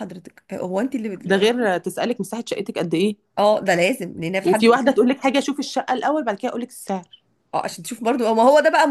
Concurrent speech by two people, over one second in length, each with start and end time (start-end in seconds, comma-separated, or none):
none